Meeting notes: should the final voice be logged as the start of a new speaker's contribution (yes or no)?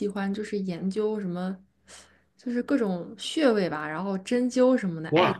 no